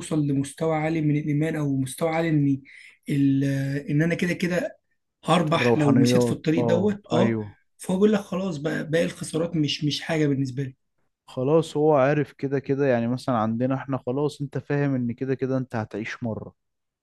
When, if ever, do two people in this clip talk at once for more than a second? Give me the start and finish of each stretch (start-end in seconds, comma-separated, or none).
5.5-7.4